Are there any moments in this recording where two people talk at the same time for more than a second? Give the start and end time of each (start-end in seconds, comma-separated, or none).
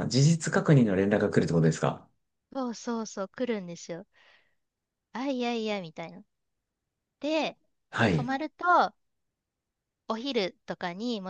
none